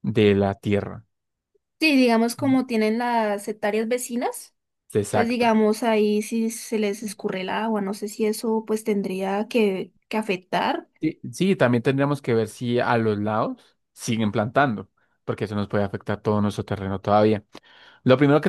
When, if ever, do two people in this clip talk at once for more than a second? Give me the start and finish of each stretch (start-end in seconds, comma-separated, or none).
none